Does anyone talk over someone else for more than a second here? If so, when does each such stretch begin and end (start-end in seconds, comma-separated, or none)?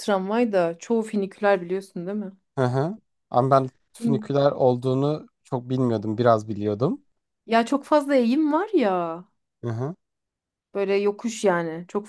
none